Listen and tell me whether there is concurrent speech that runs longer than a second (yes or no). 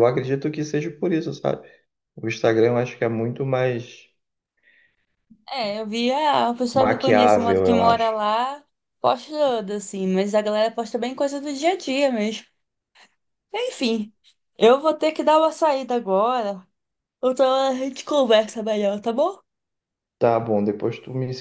yes